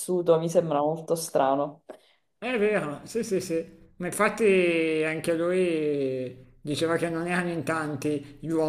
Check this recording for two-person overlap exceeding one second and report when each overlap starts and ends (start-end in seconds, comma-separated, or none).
none